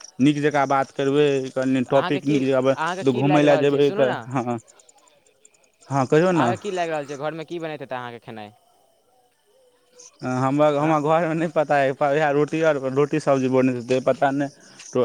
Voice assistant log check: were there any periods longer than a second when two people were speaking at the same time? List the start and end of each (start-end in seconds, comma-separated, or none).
1.7-4.2